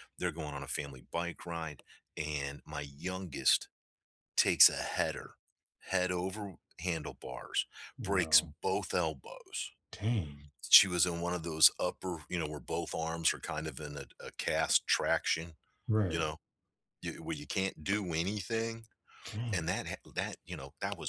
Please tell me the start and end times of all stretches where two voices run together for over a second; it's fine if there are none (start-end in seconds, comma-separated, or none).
none